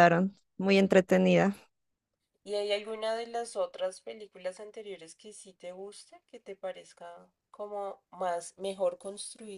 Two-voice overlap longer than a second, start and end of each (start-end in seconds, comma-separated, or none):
none